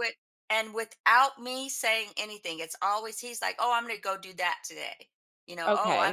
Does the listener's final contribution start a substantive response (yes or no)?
yes